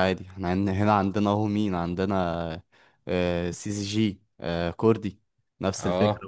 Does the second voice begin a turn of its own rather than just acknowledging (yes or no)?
yes